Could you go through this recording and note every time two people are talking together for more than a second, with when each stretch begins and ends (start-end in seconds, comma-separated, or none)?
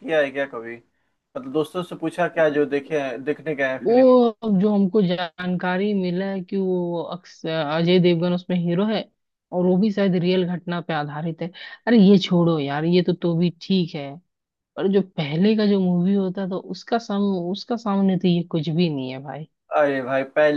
none